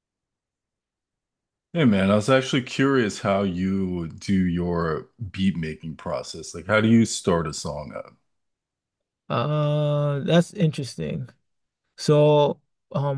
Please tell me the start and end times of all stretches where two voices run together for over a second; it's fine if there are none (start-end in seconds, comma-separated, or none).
none